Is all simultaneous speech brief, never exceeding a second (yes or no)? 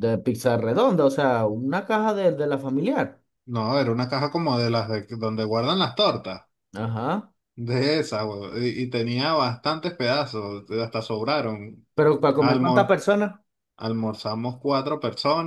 yes